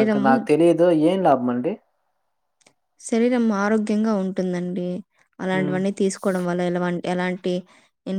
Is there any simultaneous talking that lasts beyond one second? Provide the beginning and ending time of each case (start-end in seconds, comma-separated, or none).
none